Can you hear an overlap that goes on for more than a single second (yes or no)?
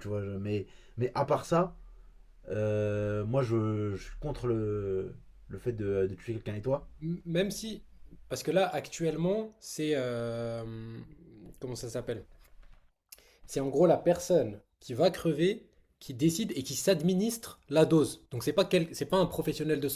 no